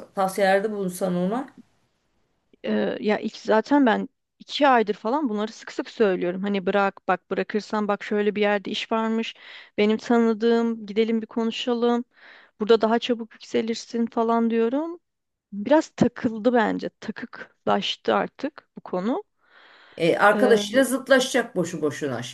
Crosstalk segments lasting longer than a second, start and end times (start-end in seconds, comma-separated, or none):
none